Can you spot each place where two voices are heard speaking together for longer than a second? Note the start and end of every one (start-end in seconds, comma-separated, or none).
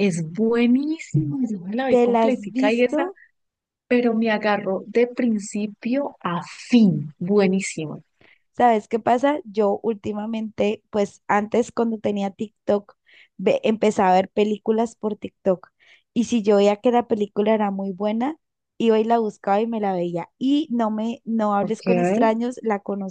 1.9-3.1